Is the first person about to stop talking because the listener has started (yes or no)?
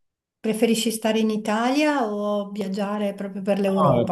yes